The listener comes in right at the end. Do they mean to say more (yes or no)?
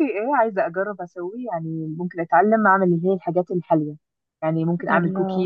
no